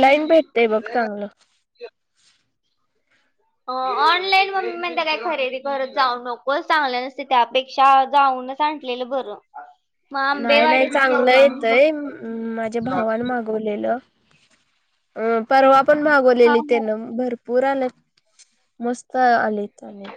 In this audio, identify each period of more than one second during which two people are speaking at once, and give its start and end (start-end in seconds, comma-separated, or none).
none